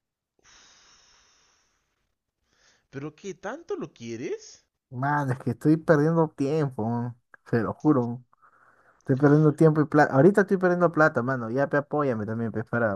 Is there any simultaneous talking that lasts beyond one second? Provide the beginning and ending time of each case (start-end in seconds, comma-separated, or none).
none